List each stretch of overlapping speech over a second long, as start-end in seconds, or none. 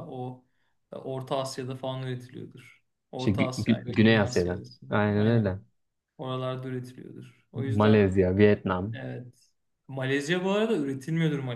3.2-5.5